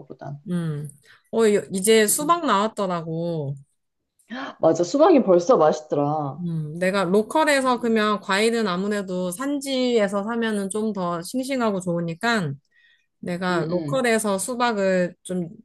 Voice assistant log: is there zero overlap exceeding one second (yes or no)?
yes